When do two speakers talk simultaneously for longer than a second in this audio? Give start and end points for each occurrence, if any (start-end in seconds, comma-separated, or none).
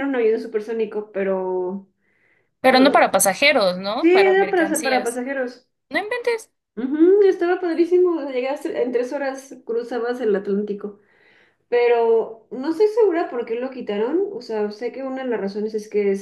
4.0-5.2